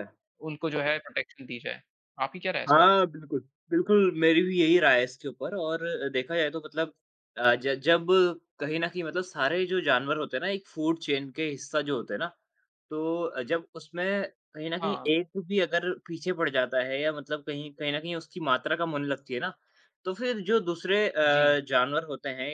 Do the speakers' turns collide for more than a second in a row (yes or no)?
no